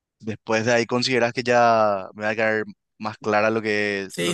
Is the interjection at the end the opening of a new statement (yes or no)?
yes